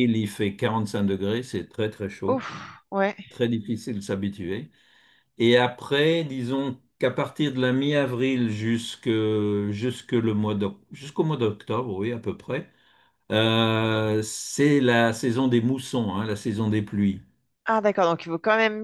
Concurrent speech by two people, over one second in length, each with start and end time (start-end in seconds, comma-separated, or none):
none